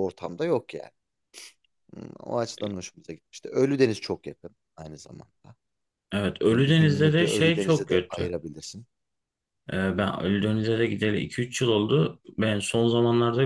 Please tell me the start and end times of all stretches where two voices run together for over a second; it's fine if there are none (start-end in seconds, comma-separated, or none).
6.5-8.3